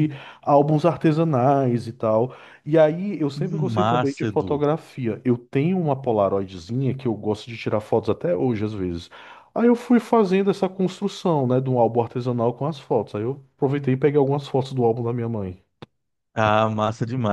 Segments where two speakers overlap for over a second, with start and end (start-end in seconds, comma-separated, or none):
3.3-4.6